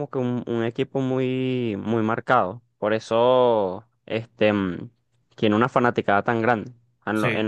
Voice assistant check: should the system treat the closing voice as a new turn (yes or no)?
no